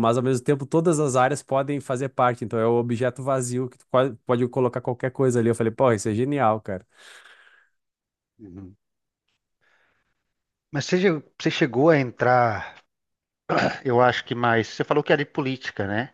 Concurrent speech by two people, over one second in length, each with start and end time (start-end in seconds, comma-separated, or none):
none